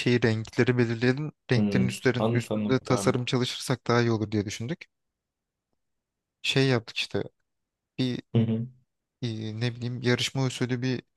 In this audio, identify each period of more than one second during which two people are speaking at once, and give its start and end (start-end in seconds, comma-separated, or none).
1.5-3.2